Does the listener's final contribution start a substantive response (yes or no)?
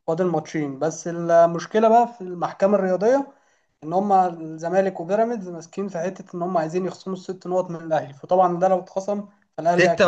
yes